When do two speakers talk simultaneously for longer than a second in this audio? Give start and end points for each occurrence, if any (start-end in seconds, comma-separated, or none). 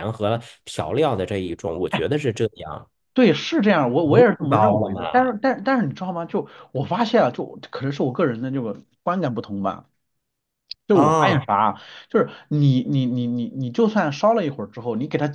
4.0-5.3